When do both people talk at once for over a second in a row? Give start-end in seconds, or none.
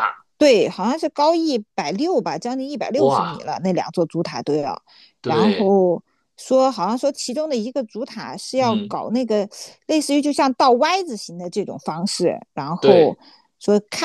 none